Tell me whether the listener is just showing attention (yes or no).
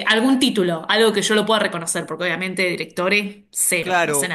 no